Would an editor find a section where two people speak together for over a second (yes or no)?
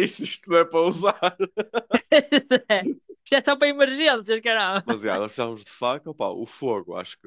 no